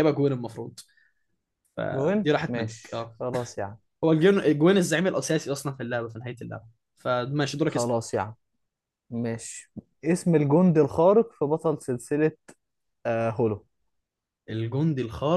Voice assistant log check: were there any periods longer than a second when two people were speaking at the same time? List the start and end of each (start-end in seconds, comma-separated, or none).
1.9-3.2